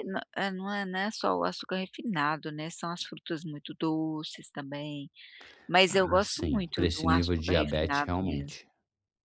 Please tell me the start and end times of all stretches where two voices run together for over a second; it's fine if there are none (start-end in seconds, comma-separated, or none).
5.9-8.6